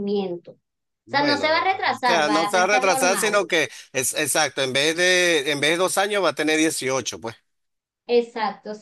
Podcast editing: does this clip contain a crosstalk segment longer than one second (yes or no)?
yes